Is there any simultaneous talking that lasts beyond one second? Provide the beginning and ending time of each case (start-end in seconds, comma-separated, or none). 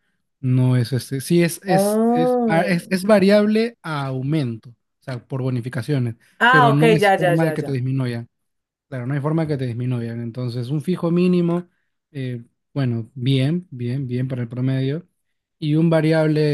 1.7-3.0, 6.4-7.9